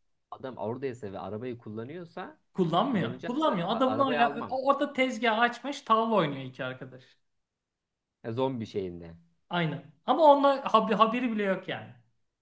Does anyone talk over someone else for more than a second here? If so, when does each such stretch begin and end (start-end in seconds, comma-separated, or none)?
2.9-4.6